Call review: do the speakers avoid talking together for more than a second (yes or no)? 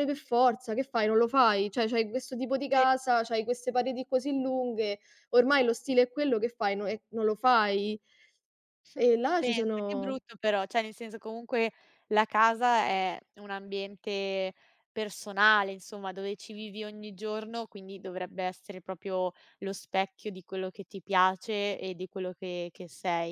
yes